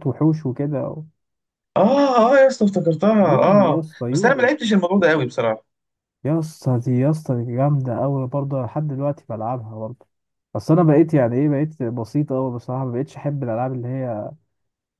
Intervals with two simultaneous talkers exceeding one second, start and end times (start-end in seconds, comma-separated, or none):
3.2-4.5